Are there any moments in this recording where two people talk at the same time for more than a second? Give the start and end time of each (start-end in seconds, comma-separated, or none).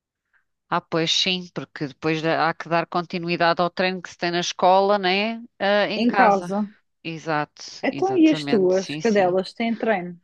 7.8-9.4